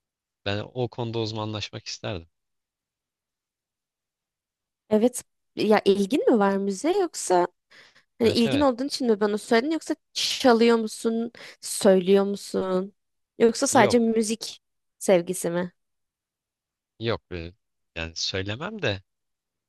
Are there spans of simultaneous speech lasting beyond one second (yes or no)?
no